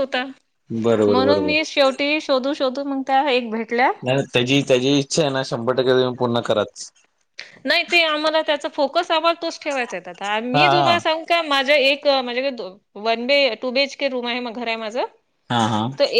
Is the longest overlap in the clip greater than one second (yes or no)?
no